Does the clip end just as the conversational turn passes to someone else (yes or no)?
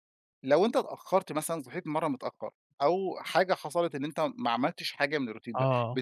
no